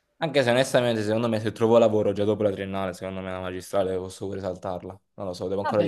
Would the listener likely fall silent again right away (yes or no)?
no